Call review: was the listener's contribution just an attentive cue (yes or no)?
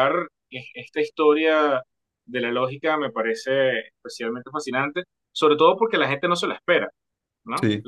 yes